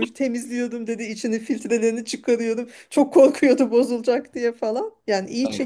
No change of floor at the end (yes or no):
yes